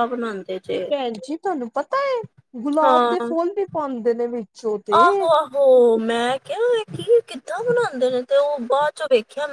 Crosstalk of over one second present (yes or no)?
no